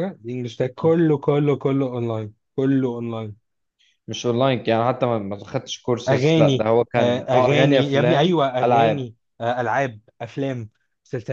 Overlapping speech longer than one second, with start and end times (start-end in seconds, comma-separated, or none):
6.1-9.1